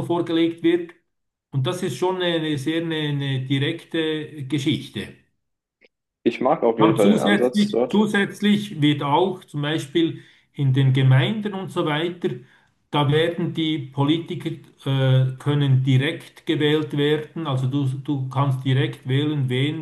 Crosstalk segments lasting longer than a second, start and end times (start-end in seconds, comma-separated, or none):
6.8-8.1